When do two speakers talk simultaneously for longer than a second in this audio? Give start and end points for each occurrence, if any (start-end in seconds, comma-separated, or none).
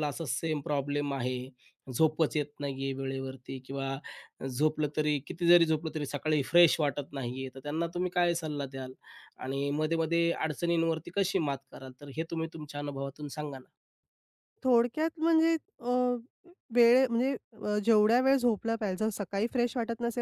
none